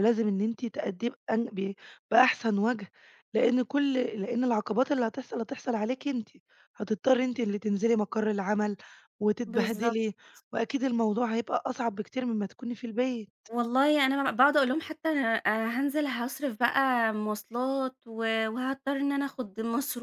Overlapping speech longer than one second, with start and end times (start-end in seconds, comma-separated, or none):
none